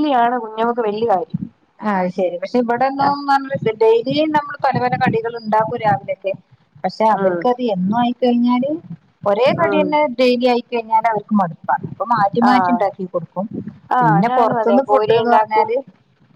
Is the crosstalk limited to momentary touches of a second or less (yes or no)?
no